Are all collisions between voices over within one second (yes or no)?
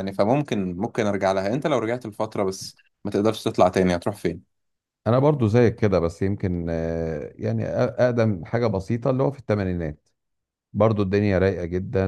yes